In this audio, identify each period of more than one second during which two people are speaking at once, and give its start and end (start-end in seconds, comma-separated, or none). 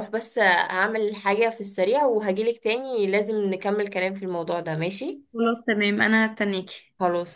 none